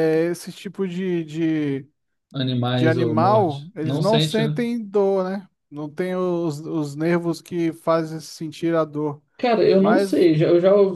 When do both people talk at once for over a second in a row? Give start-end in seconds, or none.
2.7-4.6